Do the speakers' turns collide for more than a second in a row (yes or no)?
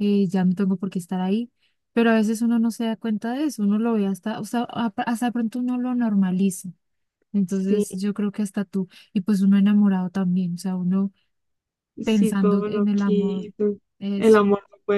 yes